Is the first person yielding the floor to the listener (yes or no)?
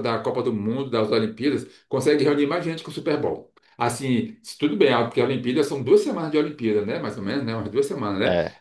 no